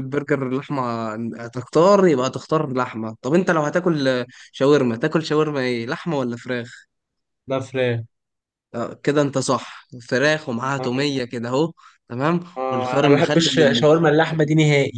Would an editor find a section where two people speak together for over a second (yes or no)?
yes